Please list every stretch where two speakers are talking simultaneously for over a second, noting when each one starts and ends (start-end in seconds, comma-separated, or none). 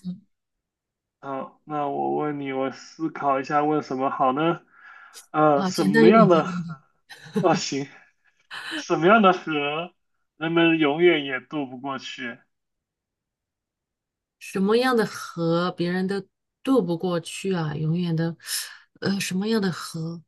5.6-6.8